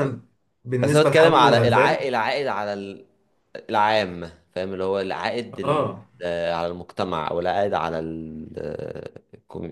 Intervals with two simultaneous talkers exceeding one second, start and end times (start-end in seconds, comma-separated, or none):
0.8-2.1